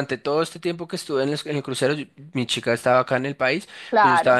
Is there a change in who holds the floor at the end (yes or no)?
no